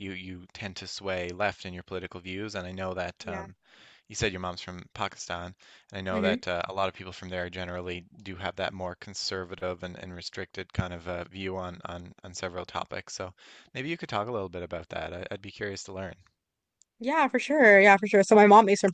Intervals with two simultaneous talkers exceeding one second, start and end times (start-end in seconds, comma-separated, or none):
none